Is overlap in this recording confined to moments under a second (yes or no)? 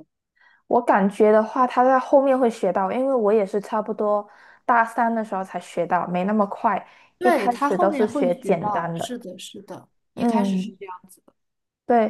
no